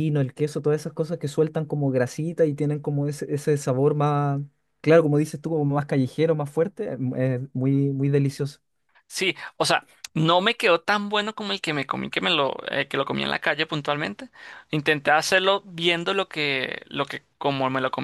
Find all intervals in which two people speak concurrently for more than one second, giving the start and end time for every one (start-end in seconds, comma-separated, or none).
none